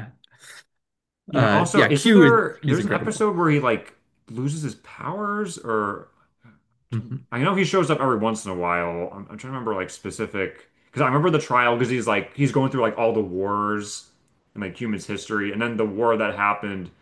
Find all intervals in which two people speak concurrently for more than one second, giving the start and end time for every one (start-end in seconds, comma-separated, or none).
1.3-3.2